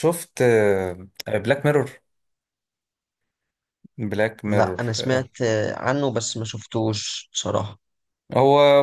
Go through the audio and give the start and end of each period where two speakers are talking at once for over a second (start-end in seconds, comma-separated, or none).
none